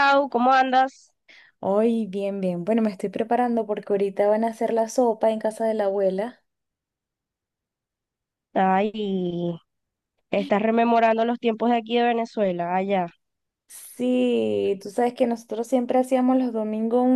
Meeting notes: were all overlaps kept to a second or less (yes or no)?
yes